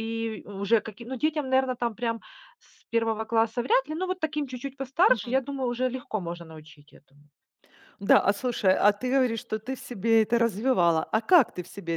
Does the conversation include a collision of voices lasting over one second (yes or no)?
no